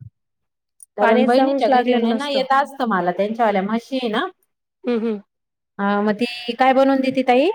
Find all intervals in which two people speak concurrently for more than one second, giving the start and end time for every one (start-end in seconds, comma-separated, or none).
1.0-2.4